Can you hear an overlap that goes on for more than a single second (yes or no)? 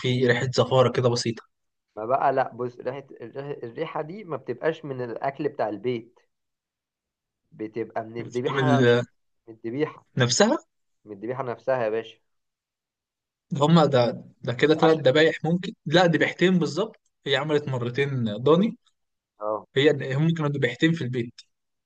no